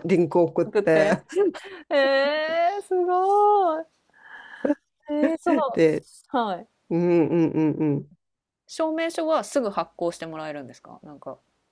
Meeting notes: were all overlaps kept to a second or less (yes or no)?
yes